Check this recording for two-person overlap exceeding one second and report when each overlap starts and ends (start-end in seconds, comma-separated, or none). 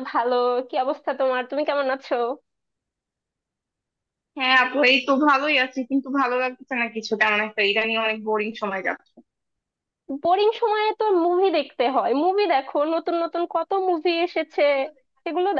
none